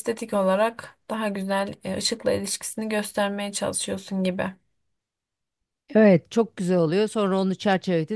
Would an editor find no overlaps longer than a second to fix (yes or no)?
yes